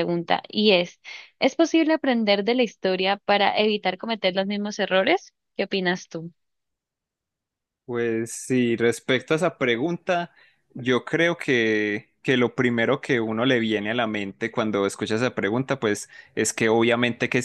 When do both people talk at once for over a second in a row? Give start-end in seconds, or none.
none